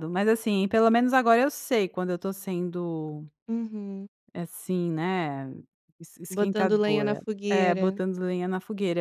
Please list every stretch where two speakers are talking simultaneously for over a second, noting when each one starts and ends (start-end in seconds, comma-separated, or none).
6.3-8.0